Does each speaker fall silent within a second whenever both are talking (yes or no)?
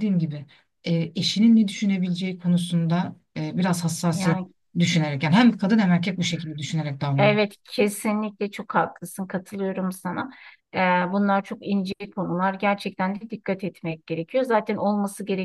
yes